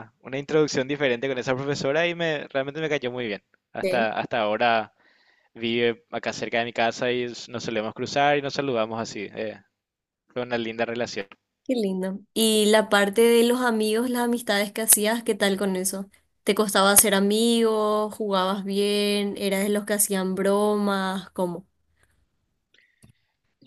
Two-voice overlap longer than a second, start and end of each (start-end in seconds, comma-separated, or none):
none